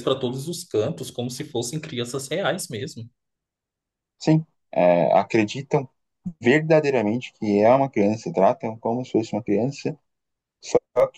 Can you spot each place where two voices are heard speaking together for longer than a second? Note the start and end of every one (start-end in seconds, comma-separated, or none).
none